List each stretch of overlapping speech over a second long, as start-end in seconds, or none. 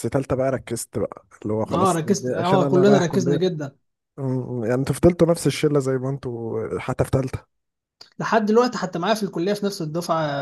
1.7-3.4